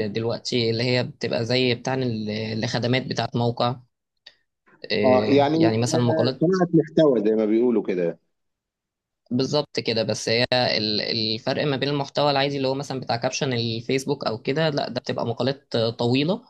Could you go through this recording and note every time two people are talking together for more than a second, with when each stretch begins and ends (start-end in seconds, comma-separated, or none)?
5.0-6.4